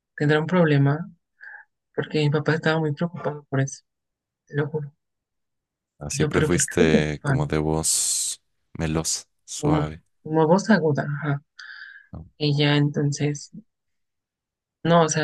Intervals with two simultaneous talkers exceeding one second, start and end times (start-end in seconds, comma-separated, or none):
6.1-7.5